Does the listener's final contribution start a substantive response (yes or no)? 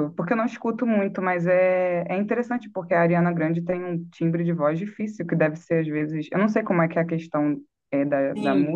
yes